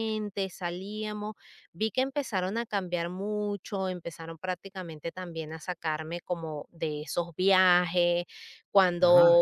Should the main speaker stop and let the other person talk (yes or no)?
no